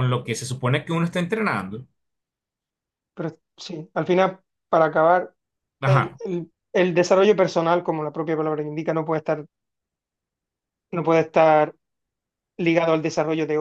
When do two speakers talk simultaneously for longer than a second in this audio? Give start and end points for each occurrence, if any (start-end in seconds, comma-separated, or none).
none